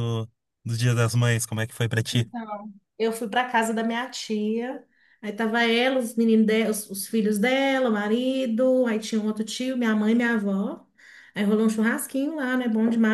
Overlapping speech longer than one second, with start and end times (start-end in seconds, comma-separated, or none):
none